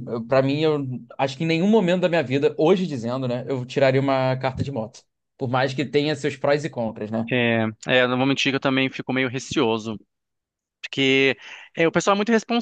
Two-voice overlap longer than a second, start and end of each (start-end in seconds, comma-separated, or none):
none